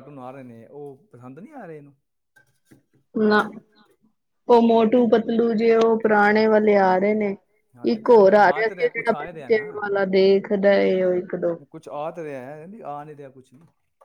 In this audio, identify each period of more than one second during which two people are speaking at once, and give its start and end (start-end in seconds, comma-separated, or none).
7.9-9.6